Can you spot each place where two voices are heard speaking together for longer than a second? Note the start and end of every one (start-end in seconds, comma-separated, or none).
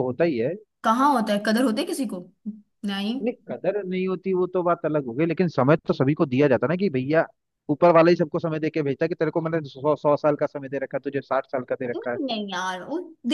none